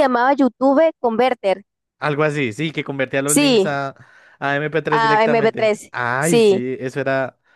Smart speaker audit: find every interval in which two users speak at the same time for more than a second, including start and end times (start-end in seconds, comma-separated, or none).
4.9-6.6